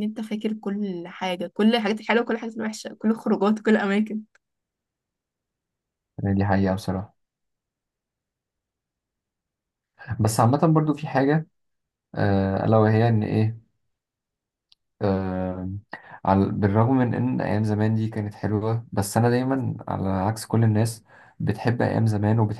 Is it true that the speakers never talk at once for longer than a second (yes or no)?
yes